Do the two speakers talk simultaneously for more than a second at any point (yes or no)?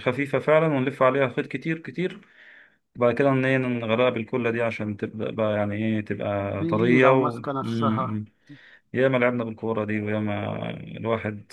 yes